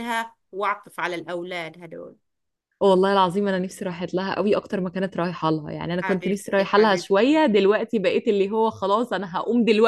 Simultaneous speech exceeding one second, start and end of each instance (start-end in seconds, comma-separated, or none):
6.0-7.4